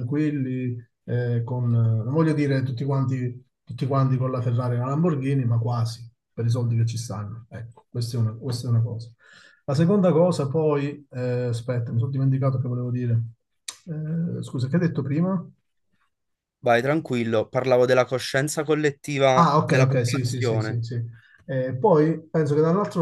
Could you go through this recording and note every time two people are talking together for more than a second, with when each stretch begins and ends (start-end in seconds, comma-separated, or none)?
19.4-20.8